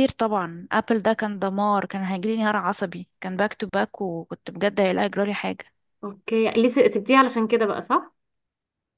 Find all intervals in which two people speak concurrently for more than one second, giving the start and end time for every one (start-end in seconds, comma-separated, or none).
none